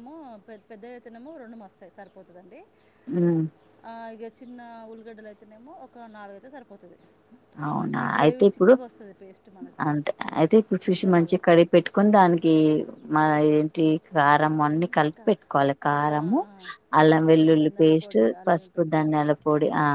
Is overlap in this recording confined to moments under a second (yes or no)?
no